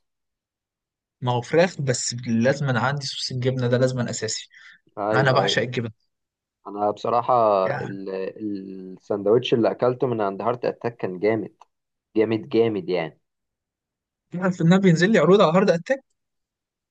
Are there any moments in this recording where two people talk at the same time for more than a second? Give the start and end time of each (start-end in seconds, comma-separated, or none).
none